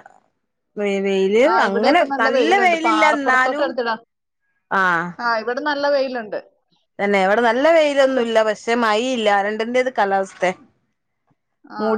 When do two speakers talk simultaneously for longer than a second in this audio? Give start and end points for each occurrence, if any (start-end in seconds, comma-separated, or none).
1.5-3.6